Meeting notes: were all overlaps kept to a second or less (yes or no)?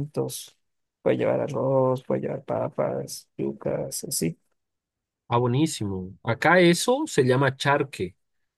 yes